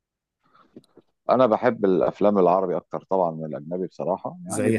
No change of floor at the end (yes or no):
yes